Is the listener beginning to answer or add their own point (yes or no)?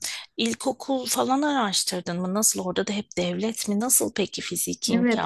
yes